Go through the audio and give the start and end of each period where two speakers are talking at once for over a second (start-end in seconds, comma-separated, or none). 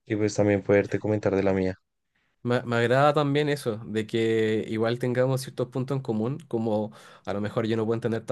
none